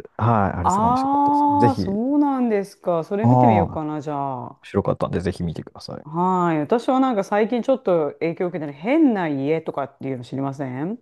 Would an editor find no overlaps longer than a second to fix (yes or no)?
no